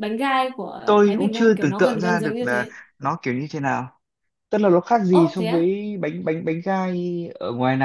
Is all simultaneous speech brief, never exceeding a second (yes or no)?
no